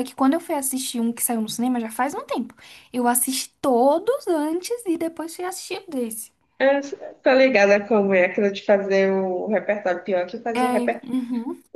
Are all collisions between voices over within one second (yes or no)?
yes